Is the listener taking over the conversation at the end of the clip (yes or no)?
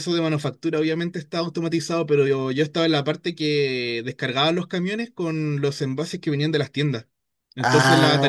no